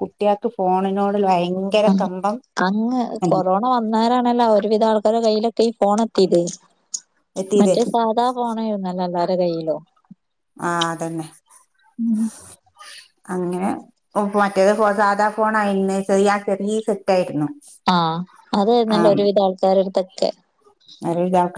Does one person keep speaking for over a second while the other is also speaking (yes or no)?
no